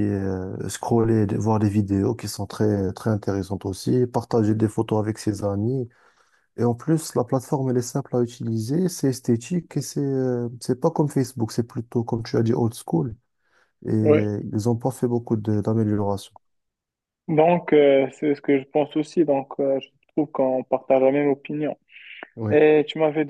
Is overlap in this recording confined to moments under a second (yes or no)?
yes